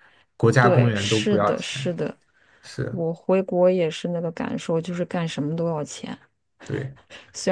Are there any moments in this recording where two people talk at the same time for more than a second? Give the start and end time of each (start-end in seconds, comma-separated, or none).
0.6-1.9